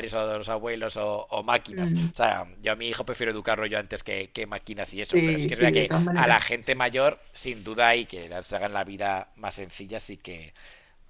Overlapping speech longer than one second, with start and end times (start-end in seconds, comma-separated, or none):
5.0-6.4